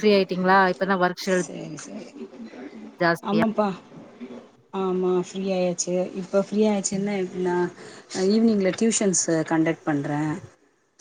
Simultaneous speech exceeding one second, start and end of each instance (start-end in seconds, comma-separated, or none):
none